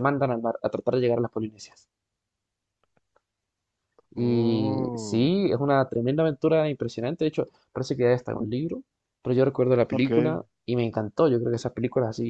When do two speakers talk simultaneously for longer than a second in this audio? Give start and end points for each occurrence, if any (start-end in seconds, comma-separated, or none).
4.2-5.5